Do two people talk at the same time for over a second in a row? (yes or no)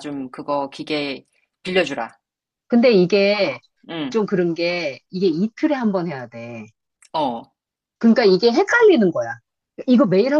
no